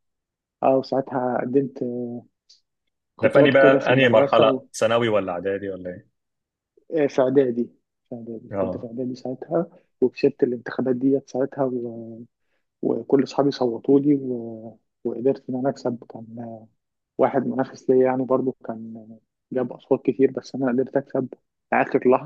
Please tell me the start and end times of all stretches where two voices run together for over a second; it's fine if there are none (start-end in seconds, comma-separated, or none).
3.2-4.6